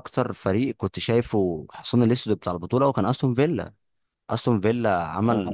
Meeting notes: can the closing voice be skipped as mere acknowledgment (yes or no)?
yes